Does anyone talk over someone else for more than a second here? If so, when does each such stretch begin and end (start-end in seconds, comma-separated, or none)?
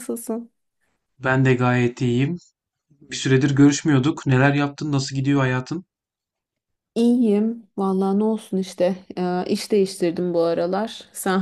none